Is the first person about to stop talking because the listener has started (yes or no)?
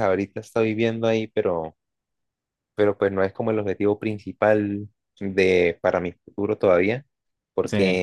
no